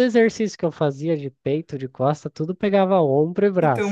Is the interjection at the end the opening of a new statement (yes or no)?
yes